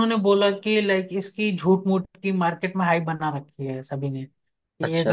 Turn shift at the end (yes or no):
no